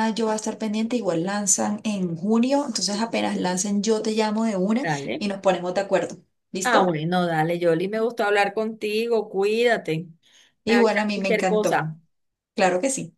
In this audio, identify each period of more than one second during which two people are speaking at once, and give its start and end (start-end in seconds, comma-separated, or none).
10.7-11.9